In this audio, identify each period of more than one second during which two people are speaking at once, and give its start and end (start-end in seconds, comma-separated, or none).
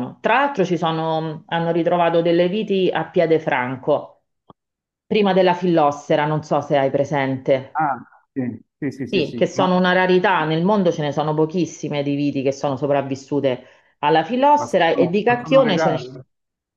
14.6-16.0